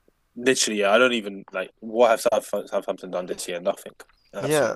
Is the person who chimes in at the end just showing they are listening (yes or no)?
no